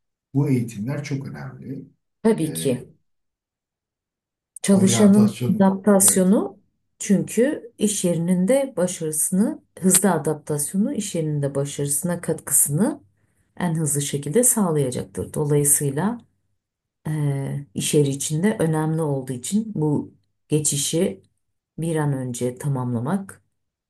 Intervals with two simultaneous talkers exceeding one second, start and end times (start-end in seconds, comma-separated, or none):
4.7-6.3